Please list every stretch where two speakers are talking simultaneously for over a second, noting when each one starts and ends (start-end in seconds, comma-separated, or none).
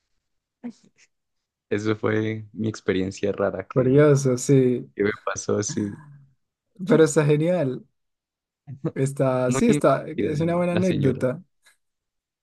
9.4-11.2